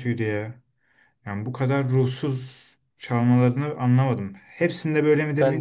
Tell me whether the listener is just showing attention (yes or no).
yes